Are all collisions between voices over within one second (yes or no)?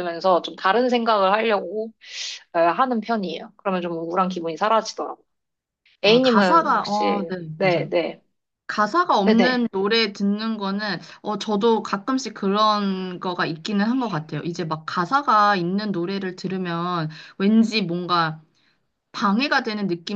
no